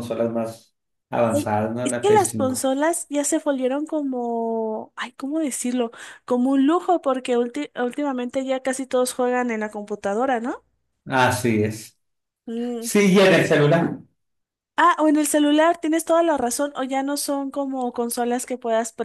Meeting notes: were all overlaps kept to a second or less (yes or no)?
no